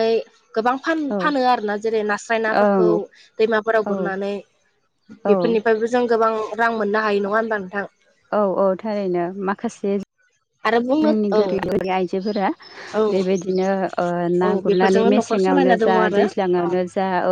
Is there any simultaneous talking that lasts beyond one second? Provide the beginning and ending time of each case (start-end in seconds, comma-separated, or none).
14.4-16.2